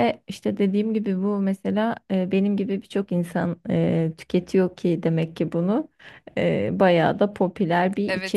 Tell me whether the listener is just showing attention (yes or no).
no